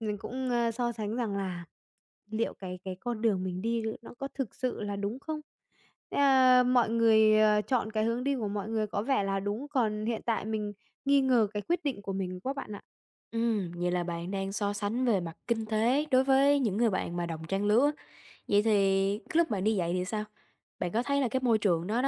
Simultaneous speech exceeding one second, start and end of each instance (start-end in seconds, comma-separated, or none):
none